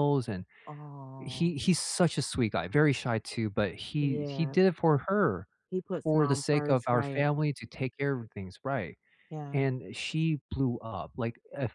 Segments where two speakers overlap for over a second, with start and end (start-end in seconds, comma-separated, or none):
6.0-7.3